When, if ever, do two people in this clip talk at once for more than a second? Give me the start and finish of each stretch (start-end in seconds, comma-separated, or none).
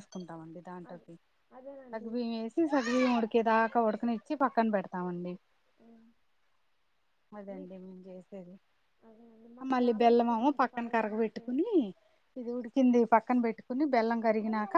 9.7-11.5